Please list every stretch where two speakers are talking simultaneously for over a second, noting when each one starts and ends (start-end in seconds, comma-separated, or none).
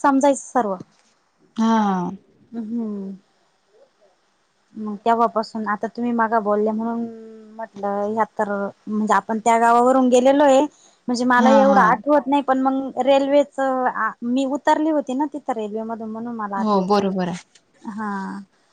none